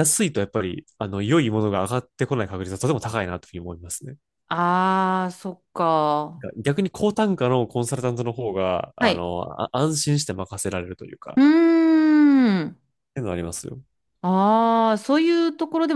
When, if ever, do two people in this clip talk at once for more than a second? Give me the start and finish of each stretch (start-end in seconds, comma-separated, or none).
none